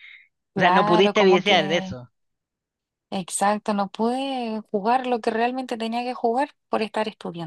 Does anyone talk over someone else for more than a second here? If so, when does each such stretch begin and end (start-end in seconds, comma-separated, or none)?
0.6-2.0